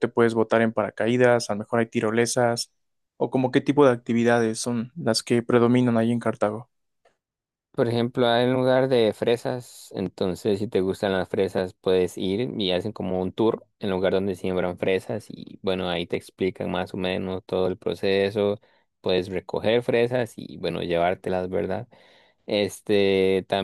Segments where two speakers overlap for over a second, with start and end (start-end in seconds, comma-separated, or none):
none